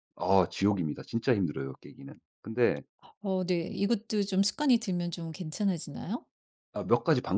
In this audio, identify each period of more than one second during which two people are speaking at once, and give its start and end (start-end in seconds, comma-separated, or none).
none